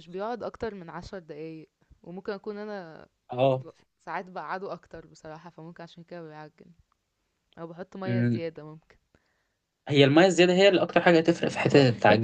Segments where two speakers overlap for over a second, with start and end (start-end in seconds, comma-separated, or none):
none